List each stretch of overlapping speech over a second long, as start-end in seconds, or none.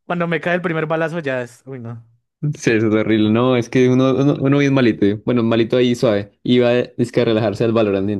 none